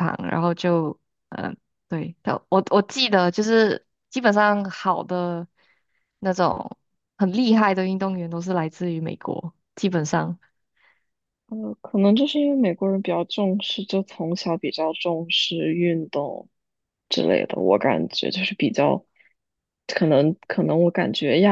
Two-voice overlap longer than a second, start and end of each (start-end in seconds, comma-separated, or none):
none